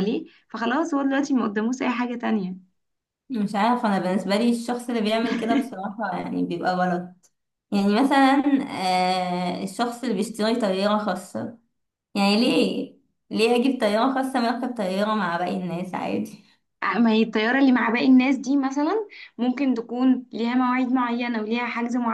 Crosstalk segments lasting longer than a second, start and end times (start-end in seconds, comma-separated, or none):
none